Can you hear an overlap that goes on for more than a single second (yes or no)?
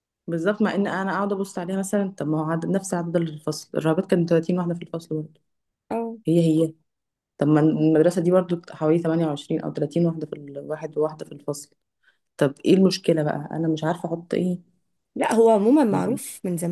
no